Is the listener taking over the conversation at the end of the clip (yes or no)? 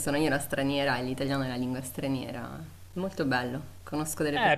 yes